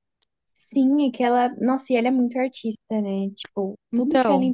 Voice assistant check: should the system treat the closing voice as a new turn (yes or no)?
no